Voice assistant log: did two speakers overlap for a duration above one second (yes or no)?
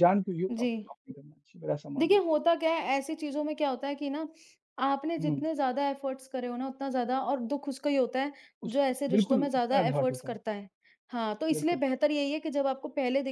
yes